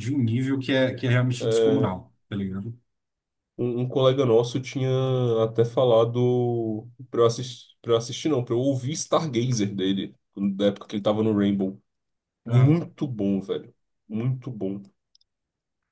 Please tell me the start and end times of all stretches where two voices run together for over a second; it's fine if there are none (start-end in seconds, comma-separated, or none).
none